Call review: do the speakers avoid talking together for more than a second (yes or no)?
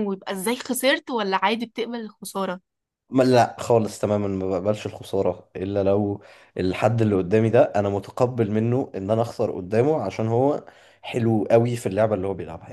yes